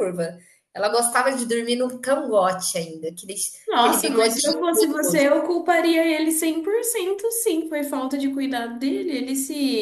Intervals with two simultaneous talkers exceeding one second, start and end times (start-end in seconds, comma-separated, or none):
3.8-5.2